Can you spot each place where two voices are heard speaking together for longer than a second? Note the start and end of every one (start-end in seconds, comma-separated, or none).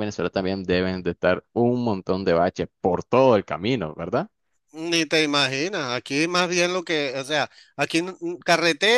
none